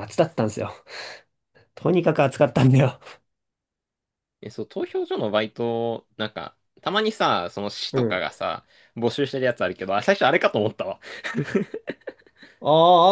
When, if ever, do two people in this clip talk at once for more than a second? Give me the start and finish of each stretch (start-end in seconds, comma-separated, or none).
none